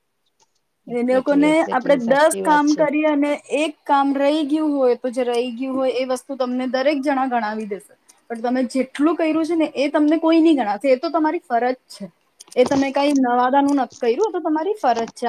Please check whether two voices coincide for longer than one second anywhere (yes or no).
yes